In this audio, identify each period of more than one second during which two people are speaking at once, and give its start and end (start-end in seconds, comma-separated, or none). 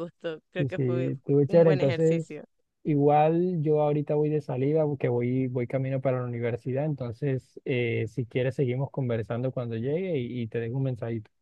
0.6-2.4